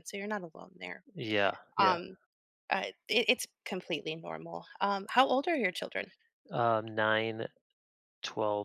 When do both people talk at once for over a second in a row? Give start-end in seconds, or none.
none